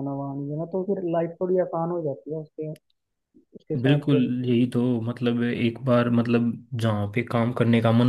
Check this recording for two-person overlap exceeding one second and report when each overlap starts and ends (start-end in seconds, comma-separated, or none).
none